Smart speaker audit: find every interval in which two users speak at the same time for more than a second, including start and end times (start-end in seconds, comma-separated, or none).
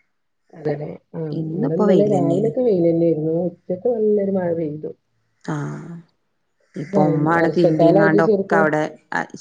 7.0-8.6